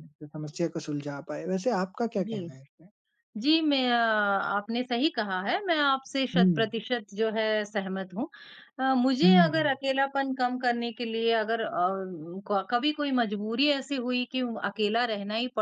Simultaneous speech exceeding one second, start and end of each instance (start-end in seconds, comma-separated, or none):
none